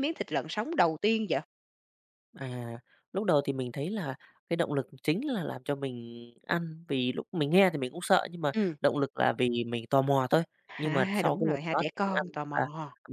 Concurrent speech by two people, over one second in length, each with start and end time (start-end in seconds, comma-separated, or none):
10.7-12.6